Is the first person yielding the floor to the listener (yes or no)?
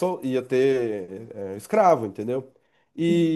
no